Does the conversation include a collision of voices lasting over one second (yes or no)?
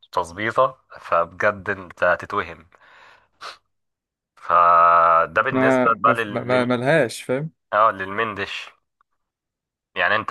yes